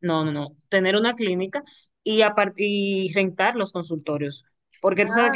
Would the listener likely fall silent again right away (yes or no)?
yes